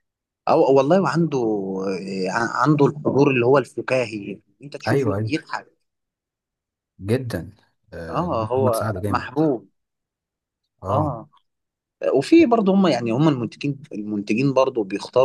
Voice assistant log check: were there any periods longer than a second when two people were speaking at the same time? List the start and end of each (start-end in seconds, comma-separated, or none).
8.1-9.4